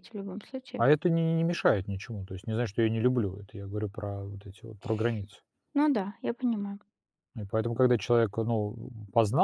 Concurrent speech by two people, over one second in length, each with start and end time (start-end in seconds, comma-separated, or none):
none